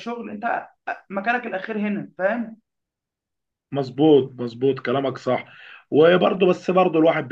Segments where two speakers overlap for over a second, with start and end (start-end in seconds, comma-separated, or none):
none